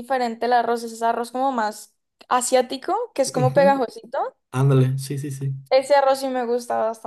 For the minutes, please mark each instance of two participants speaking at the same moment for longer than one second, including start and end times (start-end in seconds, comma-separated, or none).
none